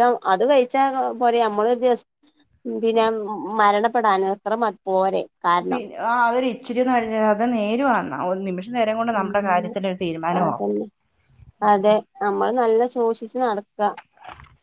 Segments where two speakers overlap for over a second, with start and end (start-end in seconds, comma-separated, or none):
none